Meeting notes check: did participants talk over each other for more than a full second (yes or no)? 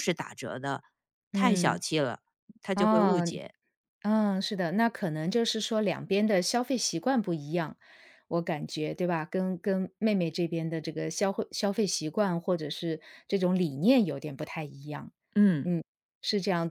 no